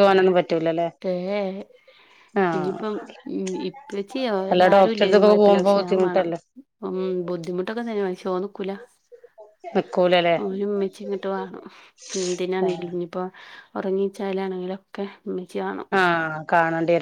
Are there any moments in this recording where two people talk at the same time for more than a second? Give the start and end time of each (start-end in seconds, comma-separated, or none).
4.5-6.3